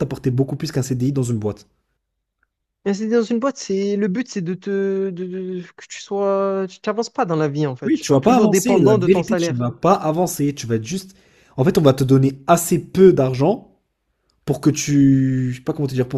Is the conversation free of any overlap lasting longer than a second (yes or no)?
no